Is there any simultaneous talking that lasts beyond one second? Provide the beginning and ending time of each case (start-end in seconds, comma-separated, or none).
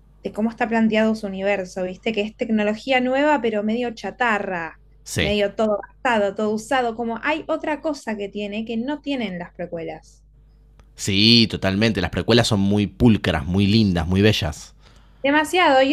none